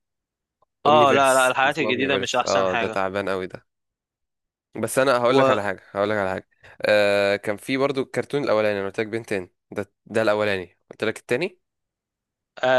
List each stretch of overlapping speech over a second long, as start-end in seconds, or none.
0.9-3.0